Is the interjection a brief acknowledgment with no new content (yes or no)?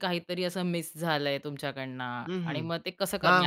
no